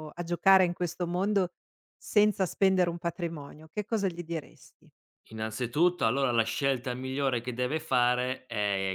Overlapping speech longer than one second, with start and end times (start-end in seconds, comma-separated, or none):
none